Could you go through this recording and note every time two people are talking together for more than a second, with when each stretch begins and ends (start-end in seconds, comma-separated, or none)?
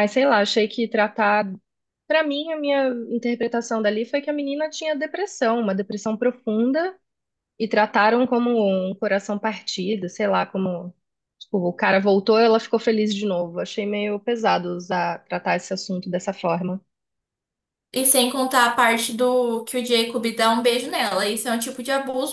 none